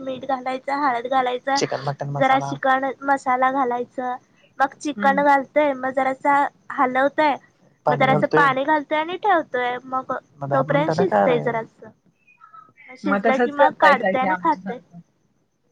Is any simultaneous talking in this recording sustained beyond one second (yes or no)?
yes